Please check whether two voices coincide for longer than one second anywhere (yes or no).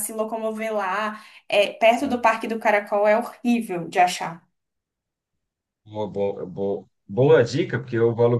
no